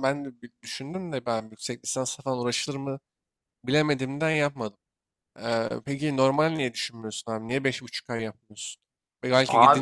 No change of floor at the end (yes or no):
yes